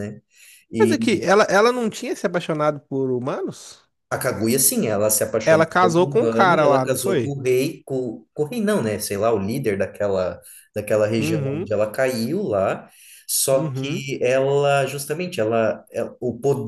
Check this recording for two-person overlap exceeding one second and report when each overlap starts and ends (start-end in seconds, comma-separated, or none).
5.4-7.4